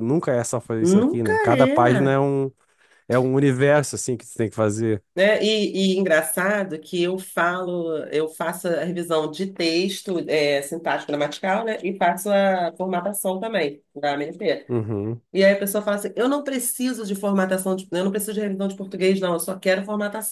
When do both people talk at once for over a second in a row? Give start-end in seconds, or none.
0.8-2.2